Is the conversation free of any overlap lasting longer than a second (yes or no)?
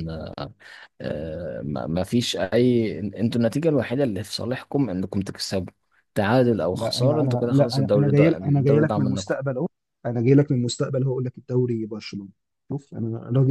no